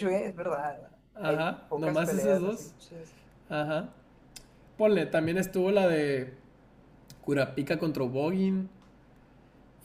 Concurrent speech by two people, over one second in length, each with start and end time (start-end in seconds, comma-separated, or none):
1.1-2.7